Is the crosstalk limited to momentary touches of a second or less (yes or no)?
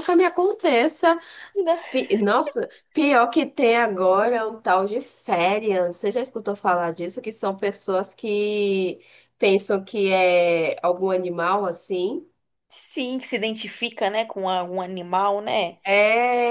yes